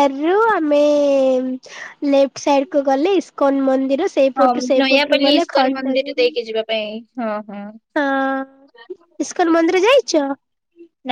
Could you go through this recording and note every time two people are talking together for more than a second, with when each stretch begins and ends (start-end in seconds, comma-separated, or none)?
4.4-6.3